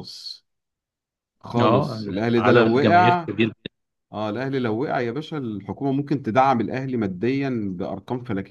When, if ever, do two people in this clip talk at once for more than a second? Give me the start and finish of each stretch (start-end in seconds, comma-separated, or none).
1.6-3.3